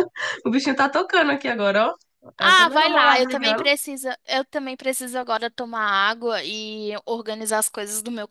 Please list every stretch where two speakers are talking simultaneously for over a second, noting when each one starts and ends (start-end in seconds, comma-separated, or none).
2.4-3.7